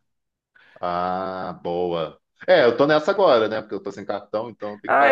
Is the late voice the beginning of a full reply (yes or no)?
yes